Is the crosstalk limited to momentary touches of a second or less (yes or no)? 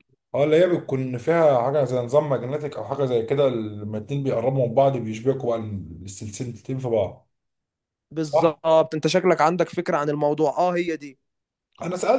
yes